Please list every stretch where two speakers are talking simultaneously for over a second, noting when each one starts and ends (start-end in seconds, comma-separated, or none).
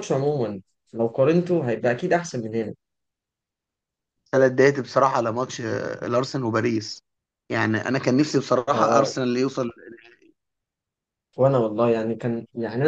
none